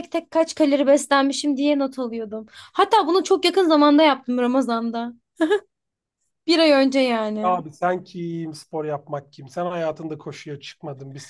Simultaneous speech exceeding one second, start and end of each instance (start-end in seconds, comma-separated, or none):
none